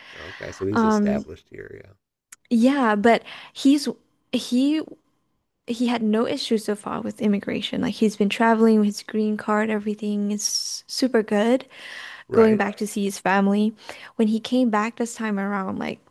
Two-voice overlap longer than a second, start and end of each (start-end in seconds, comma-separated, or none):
none